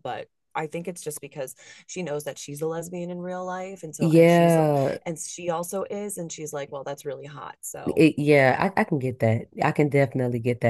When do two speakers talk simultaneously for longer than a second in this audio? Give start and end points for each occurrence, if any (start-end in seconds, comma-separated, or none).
none